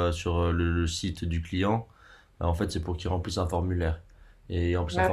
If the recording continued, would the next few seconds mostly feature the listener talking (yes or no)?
no